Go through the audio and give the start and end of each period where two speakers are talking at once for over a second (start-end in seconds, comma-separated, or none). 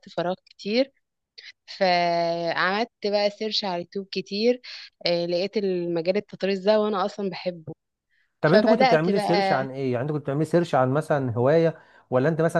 8.4-9.7